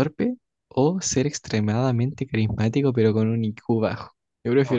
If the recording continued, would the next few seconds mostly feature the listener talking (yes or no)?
yes